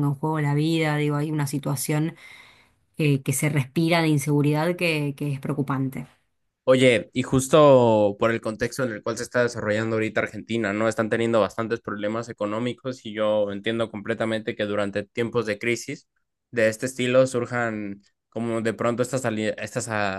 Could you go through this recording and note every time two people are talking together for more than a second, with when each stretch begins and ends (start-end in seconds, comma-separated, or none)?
none